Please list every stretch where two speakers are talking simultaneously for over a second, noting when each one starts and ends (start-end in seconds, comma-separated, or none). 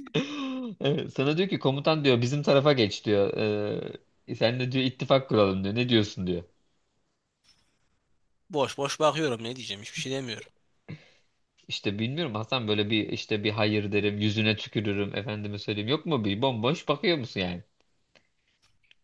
none